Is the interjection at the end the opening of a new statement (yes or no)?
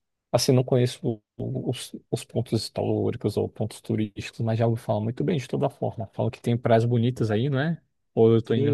yes